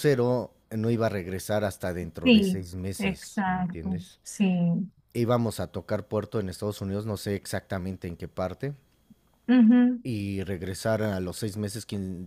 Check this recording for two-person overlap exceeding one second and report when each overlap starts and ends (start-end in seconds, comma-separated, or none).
2.2-4.2